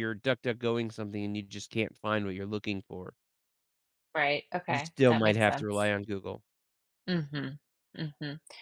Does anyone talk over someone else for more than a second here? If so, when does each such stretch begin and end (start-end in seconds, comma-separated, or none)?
4.7-5.9